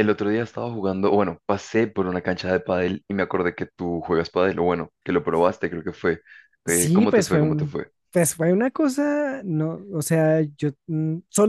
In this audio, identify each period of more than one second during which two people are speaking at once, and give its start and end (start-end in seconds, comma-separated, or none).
6.7-7.9